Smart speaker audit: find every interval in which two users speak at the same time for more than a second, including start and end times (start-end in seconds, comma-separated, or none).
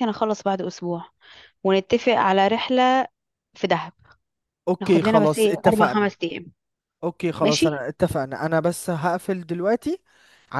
4.8-6.1